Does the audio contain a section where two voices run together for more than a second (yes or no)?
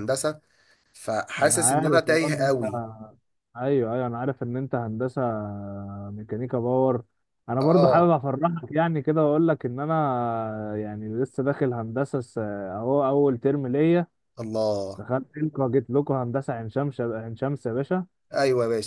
yes